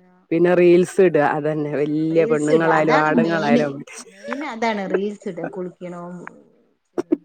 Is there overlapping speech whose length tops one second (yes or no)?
yes